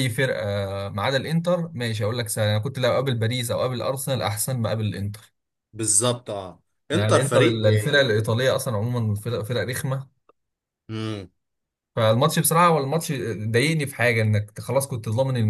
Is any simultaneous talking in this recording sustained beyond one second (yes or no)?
yes